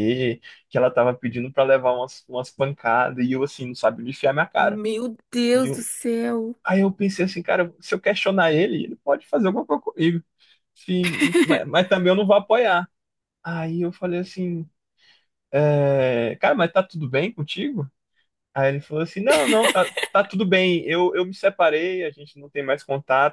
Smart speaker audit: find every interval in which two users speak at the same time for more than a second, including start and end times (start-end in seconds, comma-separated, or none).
none